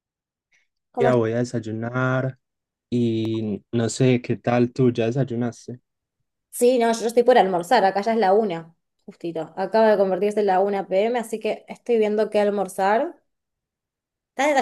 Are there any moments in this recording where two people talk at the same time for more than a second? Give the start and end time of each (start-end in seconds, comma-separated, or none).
none